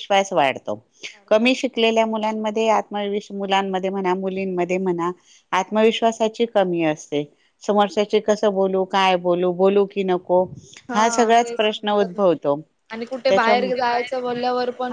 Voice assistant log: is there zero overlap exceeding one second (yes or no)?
no